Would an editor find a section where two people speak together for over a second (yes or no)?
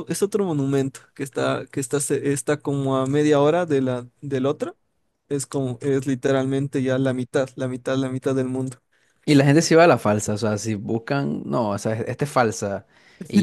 no